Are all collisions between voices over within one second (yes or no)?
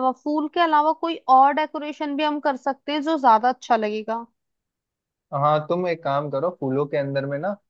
yes